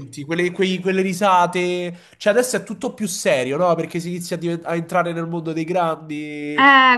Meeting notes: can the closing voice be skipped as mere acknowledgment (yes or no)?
no